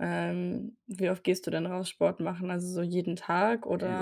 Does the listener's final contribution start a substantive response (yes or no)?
yes